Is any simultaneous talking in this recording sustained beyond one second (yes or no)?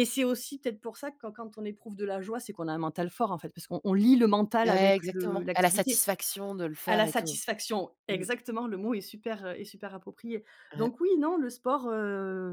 yes